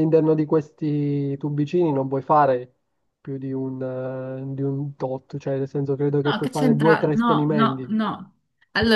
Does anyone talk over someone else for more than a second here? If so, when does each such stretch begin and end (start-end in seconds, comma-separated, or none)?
6.2-8.0